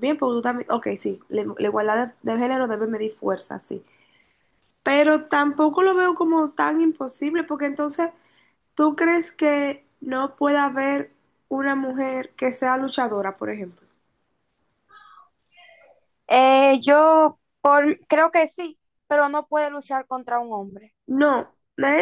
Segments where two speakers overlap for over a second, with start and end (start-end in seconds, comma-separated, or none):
none